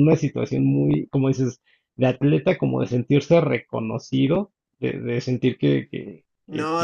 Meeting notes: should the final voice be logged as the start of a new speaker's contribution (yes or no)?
yes